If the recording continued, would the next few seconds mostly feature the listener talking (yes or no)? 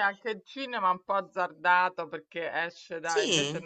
no